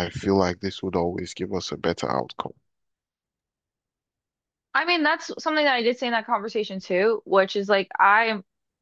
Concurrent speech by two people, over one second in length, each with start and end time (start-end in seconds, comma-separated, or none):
none